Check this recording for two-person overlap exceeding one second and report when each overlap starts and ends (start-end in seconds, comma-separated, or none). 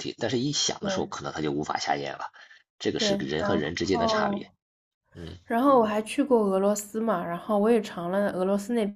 3.0-4.4